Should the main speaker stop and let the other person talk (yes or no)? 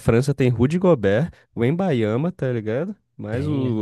no